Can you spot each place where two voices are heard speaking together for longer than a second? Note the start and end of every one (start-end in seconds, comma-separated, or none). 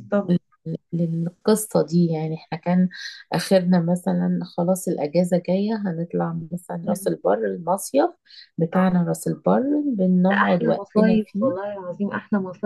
10.3-11.5